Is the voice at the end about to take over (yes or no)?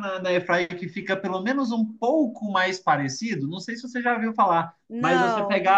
no